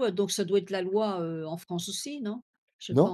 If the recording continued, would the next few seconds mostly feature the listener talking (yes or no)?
yes